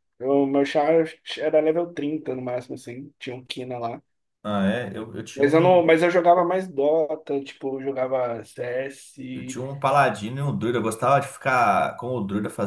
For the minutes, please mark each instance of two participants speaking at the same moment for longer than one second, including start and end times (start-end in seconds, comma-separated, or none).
none